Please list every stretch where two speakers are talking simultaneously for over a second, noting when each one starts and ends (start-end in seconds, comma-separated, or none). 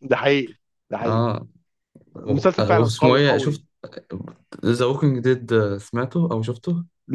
2.2-3.6